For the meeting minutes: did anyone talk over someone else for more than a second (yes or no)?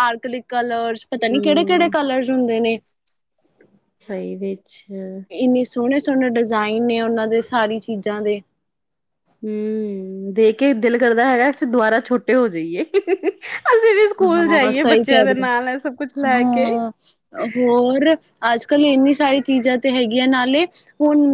yes